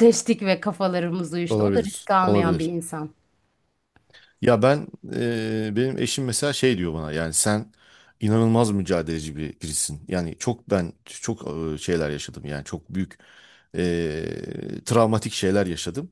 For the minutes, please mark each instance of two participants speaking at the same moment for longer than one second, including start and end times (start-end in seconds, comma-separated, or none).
1.5-2.7